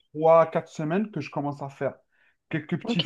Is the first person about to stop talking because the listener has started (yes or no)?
no